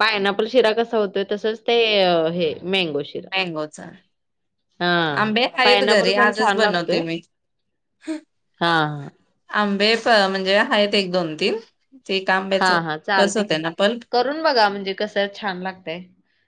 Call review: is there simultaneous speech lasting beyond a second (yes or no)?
yes